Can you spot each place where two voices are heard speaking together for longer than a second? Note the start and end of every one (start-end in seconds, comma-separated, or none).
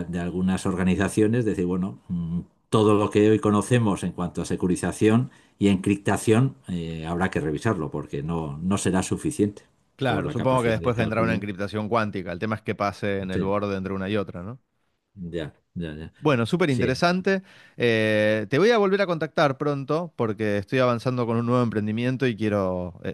10.1-11.5